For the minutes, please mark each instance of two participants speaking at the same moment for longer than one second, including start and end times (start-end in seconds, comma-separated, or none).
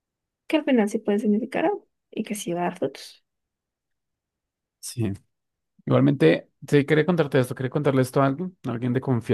none